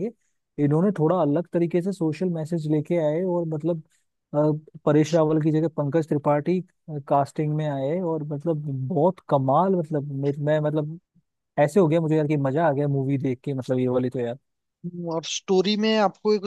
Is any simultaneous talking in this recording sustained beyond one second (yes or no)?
no